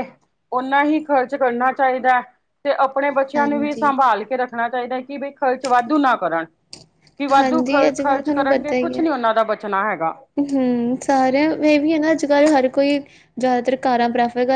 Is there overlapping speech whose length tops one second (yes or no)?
yes